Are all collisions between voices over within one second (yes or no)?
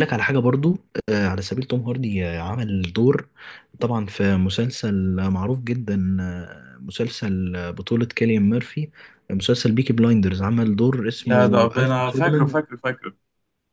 no